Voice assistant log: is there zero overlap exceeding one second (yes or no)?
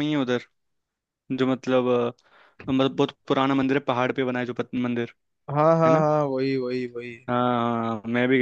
yes